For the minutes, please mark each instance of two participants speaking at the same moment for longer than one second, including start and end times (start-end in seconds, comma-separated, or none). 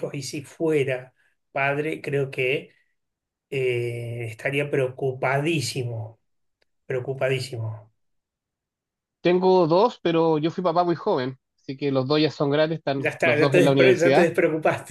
13.0-14.3